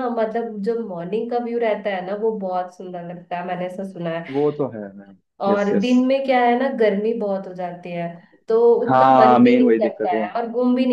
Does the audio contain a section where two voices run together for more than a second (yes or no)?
yes